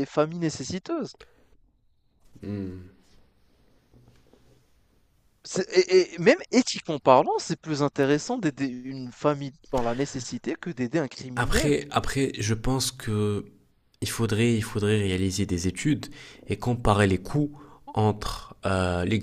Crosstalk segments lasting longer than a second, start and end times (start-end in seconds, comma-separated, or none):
none